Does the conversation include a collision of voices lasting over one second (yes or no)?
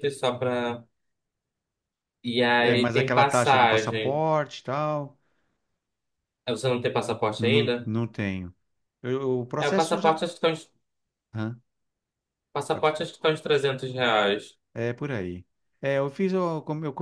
yes